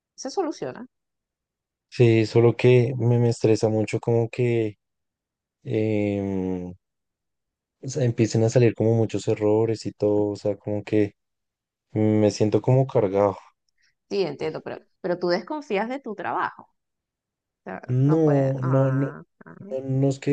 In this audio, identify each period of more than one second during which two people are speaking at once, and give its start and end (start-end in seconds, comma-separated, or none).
17.9-19.1